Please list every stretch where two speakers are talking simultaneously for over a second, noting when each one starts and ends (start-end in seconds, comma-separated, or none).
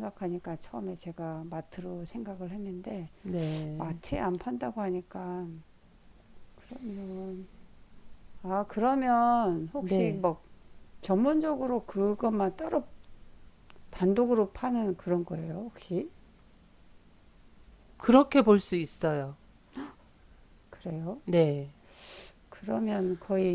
none